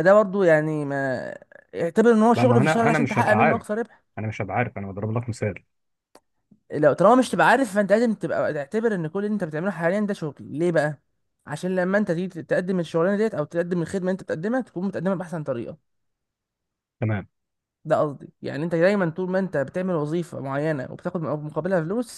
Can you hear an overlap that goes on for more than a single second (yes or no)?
yes